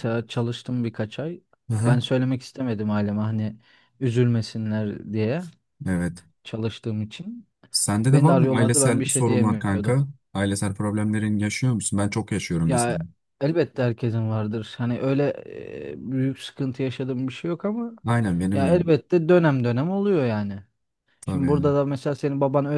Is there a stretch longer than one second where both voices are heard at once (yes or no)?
yes